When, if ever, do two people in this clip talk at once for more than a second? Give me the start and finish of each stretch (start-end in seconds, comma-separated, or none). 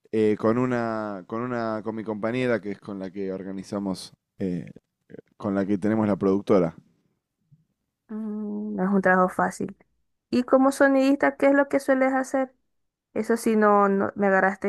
none